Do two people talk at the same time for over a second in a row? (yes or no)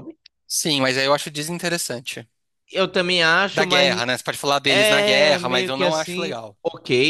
yes